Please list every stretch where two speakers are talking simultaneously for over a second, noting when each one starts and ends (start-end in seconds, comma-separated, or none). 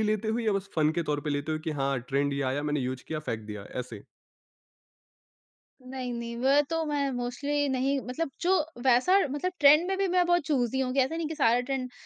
none